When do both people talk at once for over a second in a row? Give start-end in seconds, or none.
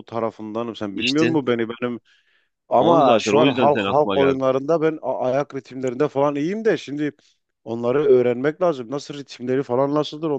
2.8-4.4